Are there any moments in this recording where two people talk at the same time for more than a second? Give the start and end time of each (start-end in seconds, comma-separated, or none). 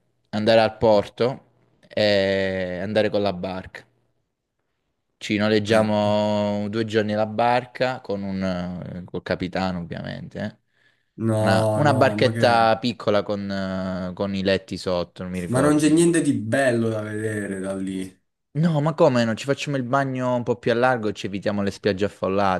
11.4-12.8